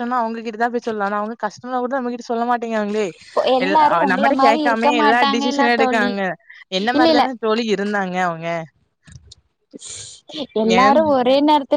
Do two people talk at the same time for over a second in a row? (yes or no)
yes